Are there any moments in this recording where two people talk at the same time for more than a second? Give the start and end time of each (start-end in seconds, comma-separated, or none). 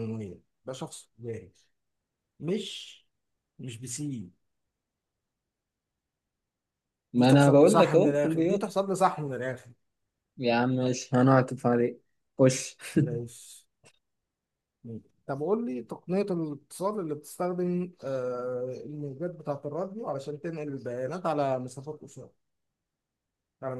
7.2-8.7